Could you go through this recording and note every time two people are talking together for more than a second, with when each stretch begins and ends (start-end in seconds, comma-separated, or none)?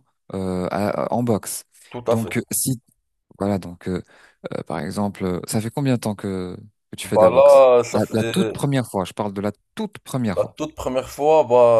7.0-8.5